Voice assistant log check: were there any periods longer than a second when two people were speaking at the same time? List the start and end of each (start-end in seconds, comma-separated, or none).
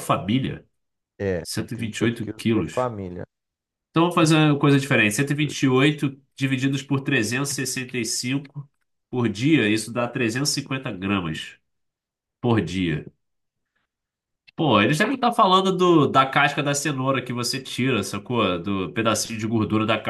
1.4-2.9